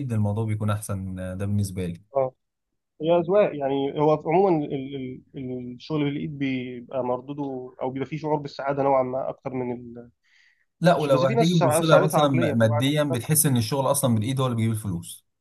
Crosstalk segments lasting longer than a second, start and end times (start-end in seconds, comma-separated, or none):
10.9-13.2